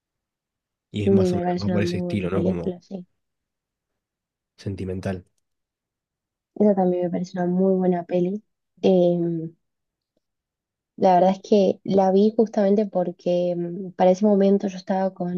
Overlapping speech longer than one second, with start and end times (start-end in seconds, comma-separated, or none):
1.0-2.7